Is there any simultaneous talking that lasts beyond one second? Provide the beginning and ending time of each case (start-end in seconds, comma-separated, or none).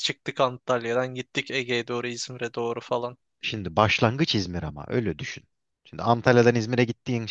none